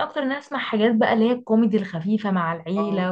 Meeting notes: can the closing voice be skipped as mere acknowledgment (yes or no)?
yes